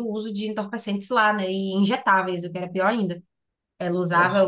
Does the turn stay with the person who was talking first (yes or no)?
yes